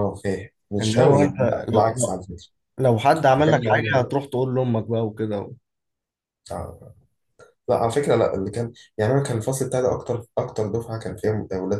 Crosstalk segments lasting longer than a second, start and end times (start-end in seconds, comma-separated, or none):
0.8-2.2